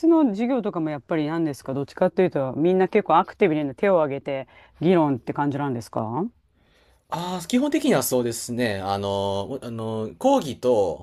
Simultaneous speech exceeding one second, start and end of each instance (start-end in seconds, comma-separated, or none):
none